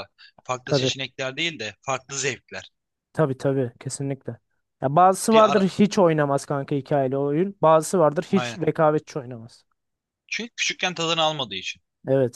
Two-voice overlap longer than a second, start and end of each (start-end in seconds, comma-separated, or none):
none